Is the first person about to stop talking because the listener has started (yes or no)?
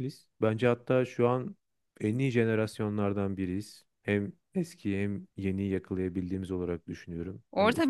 yes